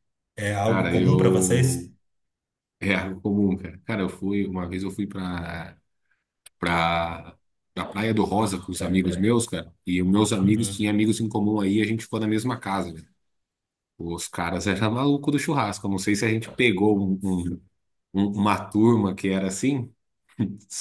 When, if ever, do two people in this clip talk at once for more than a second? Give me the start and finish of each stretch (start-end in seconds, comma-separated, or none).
0.6-1.9